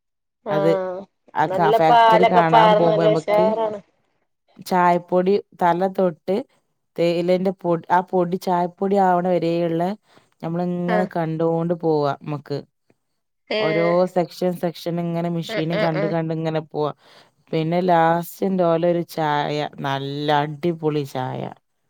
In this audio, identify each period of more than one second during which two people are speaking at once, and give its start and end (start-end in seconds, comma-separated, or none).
1.5-3.5